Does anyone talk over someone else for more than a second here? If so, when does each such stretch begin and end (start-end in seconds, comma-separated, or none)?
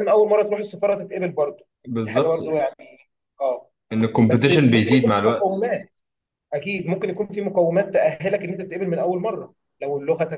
4.3-5.7